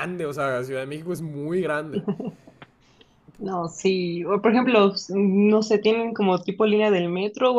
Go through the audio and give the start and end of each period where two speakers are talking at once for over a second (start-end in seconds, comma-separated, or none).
none